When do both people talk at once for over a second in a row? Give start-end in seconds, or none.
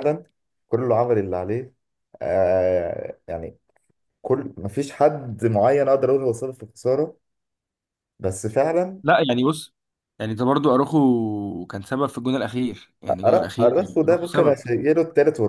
13.2-14.6